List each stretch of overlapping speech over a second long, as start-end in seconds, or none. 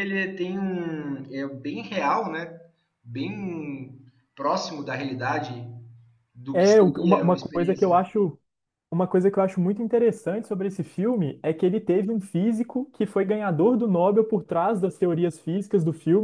6.5-8.1